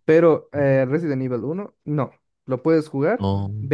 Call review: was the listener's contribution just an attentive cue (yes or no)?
yes